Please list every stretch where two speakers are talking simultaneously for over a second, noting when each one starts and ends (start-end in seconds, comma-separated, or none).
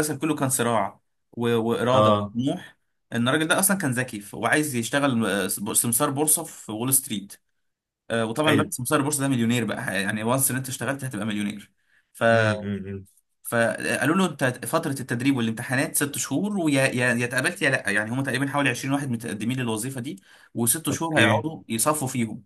none